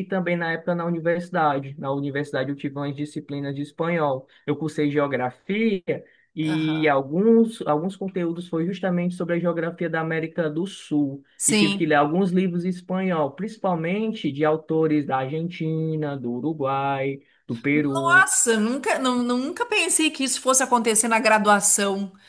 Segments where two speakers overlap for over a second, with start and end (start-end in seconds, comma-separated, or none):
none